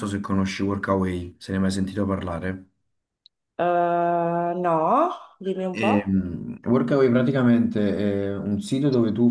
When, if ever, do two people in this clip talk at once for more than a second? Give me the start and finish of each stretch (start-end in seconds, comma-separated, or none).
none